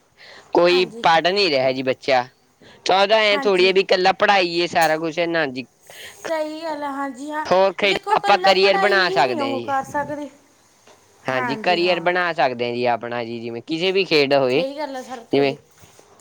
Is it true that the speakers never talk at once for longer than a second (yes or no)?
no